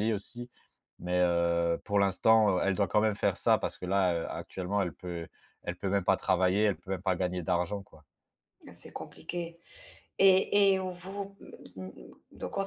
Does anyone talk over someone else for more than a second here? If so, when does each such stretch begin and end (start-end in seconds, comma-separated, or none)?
none